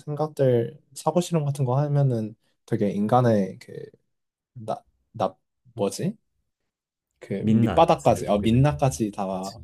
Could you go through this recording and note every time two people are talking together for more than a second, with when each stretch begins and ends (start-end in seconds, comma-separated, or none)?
7.4-8.9